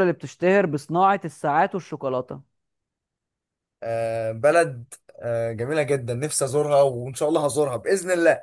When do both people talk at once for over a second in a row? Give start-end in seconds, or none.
none